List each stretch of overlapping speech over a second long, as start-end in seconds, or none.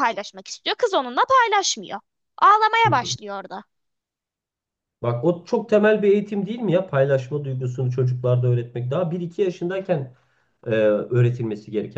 none